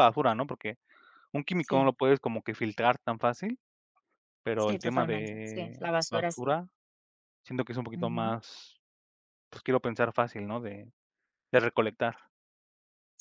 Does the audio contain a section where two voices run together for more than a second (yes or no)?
yes